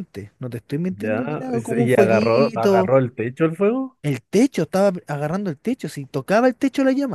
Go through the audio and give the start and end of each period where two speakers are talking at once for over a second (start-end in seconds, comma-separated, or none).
0.9-2.9